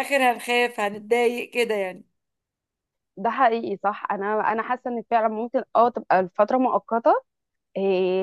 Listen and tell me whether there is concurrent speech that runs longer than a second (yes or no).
no